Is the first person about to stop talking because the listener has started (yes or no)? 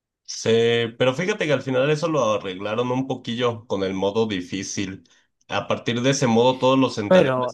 no